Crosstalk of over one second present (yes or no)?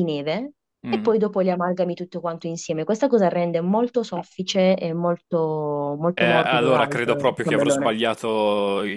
yes